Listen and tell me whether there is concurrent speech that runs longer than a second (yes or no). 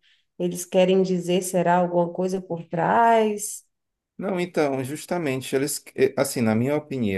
no